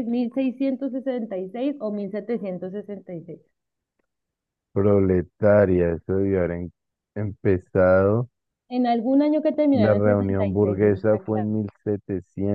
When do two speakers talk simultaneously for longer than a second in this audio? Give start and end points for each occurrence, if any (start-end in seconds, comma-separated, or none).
9.7-11.5